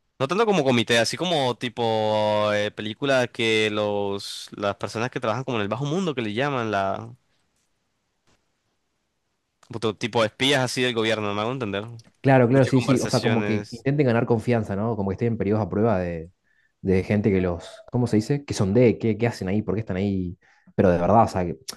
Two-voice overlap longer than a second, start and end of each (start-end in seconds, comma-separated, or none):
12.4-13.8